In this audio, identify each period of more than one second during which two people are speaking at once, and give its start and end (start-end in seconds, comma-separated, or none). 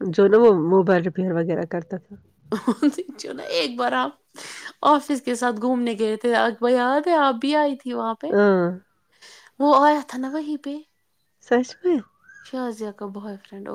none